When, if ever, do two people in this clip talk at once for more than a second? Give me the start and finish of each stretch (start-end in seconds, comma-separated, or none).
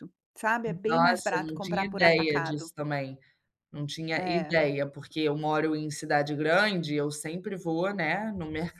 0.9-2.7